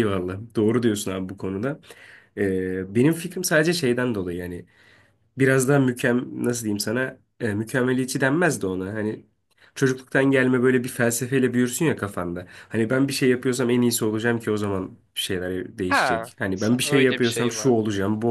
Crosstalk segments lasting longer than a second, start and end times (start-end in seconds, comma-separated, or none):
15.9-17.7